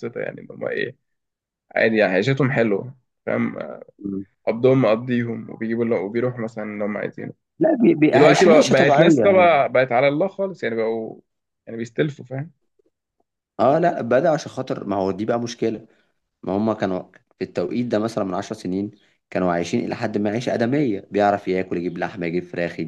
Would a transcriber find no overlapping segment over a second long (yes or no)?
no